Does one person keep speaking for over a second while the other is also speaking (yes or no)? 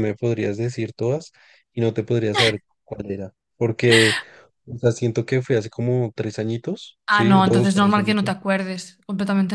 yes